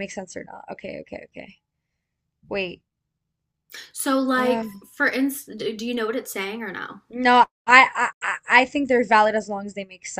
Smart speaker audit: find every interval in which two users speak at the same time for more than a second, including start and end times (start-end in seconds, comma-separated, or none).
none